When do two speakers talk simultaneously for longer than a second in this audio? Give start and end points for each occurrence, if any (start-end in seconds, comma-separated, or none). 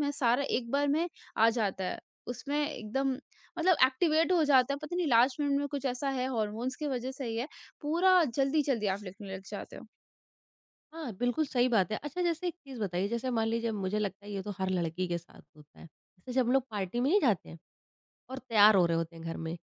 none